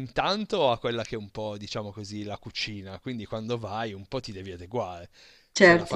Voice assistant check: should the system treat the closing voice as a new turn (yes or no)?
no